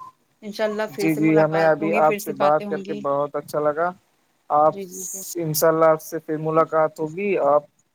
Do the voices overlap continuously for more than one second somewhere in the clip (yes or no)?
yes